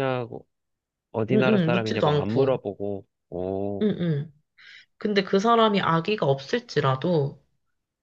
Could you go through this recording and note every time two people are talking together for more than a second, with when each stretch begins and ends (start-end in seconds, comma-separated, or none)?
1.3-2.6